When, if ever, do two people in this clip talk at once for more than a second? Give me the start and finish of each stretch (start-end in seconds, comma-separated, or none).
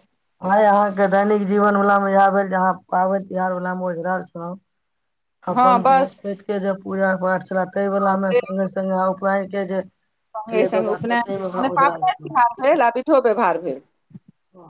10.5-12.3